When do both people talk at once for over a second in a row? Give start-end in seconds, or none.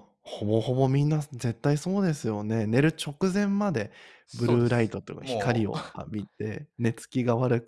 4.3-5.8